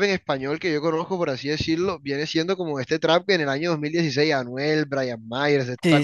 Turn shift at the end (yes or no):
no